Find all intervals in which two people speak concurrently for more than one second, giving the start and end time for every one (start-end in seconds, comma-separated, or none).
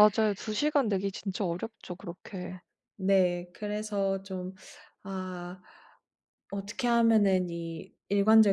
none